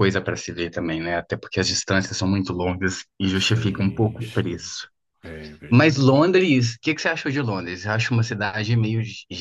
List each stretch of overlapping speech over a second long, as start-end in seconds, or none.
3.4-4.8